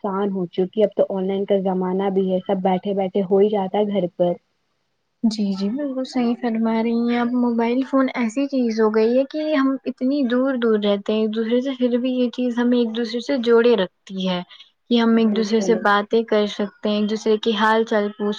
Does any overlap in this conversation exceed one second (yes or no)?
no